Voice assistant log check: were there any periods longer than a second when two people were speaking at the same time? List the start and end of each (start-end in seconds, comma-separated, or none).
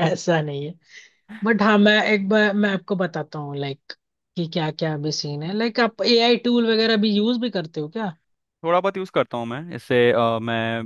none